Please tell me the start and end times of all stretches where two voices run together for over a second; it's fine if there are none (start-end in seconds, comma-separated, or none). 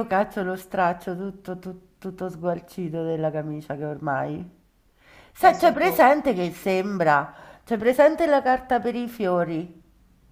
5.4-7.0